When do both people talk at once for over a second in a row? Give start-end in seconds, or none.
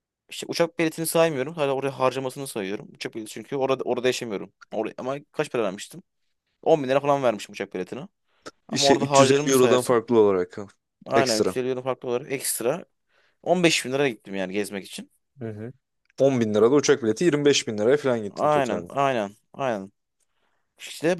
8.7-10.0